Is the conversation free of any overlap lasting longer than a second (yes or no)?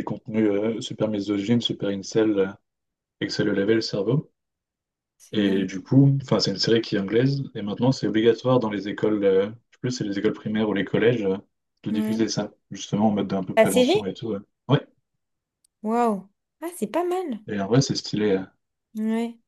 yes